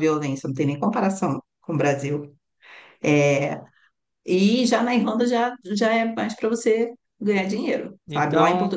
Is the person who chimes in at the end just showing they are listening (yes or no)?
yes